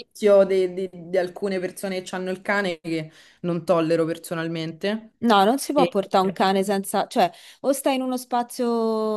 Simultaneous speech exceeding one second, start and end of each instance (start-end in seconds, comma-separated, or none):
none